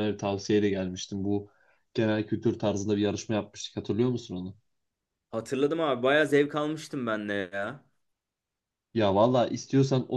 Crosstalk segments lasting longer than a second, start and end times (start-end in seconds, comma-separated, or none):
none